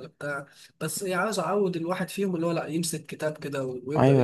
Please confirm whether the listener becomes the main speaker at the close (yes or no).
yes